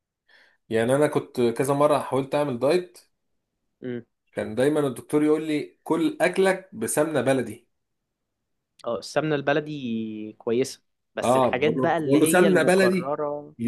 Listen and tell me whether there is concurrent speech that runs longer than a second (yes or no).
yes